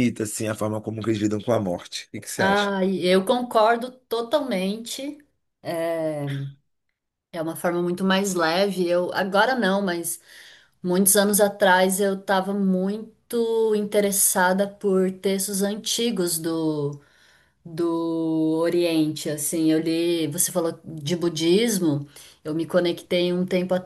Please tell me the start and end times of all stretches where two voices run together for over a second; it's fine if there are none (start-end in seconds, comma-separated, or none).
none